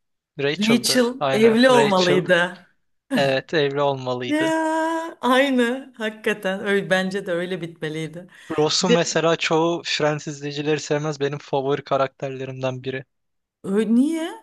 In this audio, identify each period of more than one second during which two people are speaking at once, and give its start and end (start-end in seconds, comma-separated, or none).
0.6-2.2